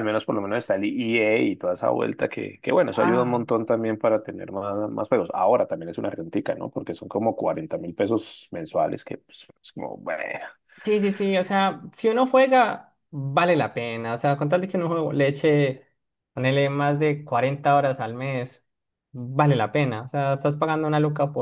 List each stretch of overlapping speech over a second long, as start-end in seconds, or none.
none